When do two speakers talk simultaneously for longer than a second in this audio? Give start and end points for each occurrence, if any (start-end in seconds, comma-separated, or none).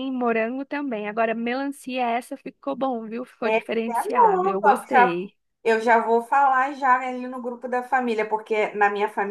3.4-5.2